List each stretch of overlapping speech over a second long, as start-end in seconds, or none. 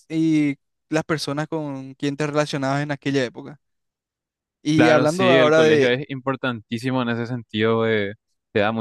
4.8-6.0